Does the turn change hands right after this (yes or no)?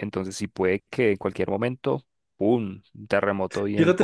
yes